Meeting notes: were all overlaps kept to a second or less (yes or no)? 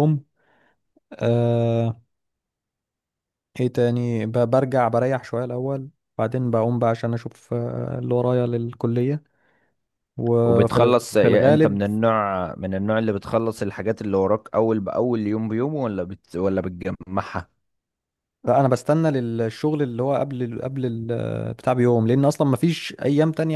no